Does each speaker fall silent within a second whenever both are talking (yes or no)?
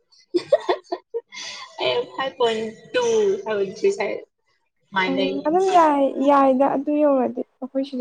yes